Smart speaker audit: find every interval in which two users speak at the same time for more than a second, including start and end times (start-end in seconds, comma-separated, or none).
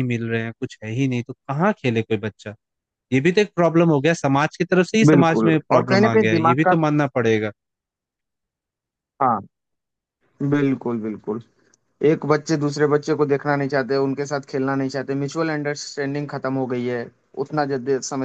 5.1-6.7